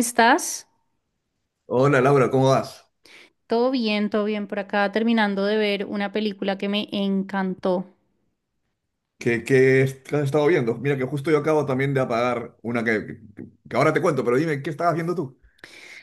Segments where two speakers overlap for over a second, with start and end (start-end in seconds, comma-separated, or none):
none